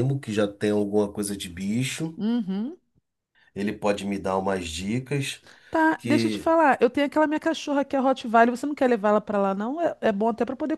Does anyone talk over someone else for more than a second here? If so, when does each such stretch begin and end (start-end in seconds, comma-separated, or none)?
none